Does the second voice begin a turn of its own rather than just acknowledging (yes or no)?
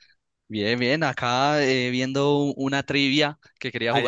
yes